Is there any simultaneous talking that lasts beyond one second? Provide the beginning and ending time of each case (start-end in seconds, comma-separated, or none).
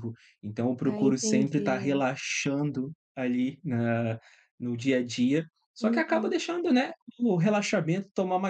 0.8-2.0